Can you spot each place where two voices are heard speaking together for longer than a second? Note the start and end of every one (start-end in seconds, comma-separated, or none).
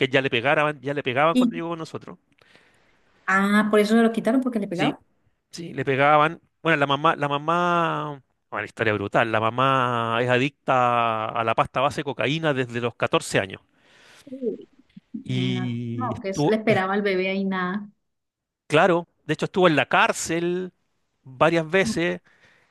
15.2-16.8